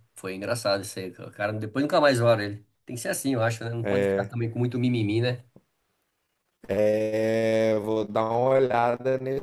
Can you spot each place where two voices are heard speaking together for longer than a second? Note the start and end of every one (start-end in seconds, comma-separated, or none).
none